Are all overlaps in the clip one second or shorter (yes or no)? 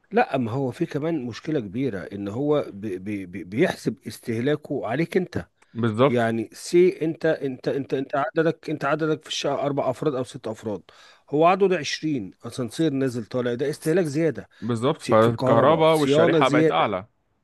no